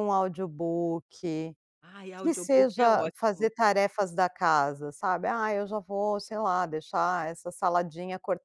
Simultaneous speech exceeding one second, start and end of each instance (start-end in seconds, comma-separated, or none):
2.2-3.5